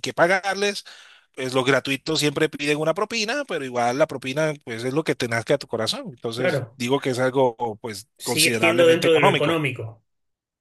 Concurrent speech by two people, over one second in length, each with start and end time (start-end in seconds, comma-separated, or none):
8.2-9.6